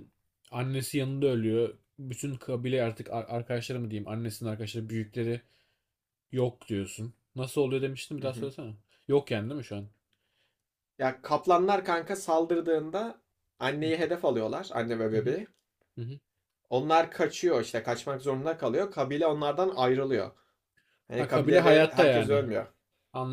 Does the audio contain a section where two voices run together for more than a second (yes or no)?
yes